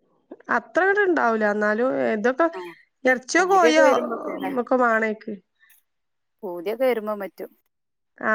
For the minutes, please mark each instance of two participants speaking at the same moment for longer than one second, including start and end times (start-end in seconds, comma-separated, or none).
none